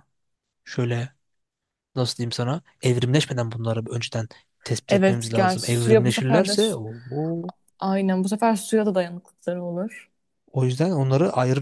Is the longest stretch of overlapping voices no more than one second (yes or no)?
no